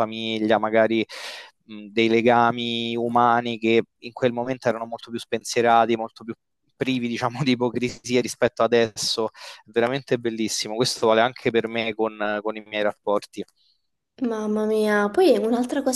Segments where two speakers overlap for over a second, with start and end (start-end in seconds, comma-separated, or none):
none